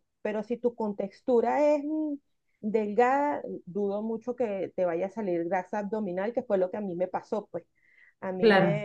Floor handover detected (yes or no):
no